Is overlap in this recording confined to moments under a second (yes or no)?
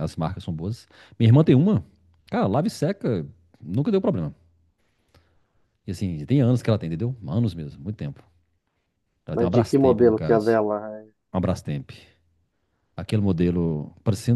no